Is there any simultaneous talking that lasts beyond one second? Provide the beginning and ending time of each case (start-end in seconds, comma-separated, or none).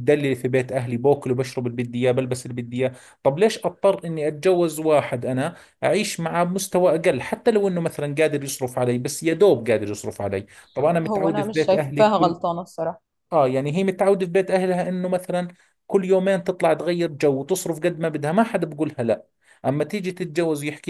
11.1-12.3